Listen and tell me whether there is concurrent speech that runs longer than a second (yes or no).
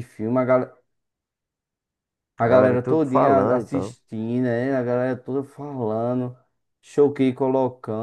yes